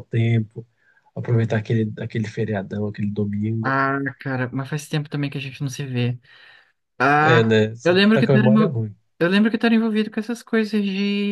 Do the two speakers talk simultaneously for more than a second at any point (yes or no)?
yes